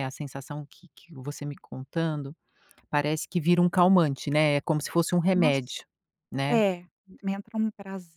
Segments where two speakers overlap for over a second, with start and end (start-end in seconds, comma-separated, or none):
none